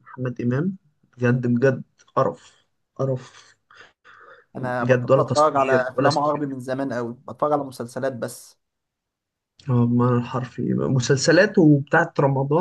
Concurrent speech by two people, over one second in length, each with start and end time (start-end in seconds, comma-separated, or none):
4.6-6.5